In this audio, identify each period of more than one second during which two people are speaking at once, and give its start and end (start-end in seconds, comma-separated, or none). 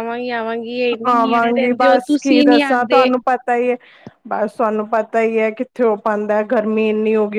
1.1-3.1